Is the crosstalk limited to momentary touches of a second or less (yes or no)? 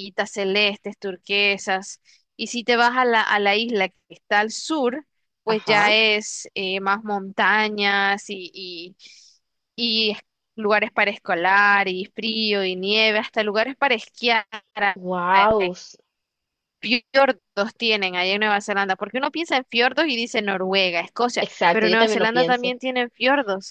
no